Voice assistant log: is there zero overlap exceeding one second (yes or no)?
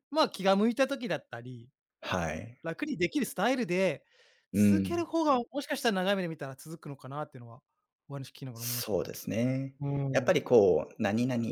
yes